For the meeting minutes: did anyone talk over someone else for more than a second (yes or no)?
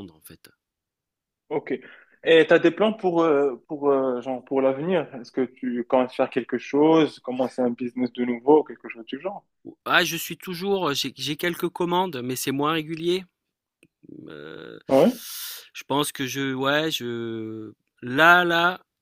no